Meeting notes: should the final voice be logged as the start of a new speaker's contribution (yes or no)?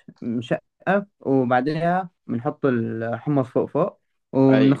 no